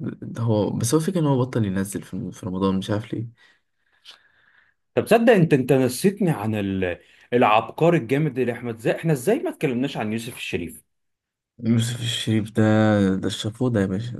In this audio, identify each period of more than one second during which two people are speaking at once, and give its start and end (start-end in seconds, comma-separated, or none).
none